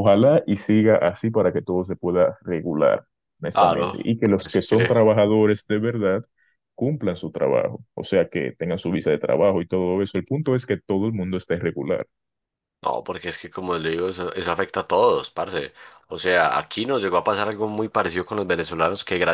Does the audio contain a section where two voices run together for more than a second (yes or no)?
yes